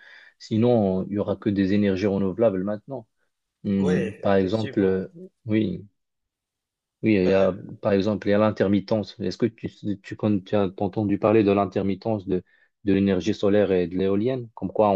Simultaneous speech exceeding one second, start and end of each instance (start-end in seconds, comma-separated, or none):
3.8-5.0